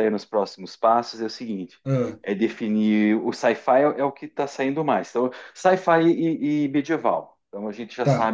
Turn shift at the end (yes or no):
yes